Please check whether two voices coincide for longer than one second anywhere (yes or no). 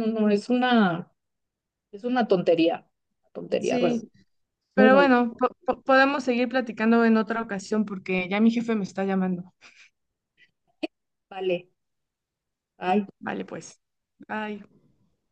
no